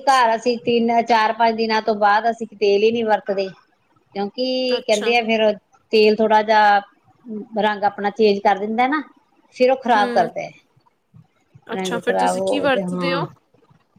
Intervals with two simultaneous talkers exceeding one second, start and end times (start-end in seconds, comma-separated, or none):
11.7-13.2